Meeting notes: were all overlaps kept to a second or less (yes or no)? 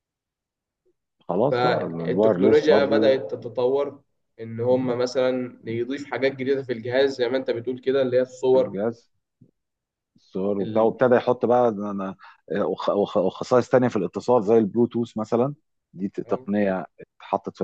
no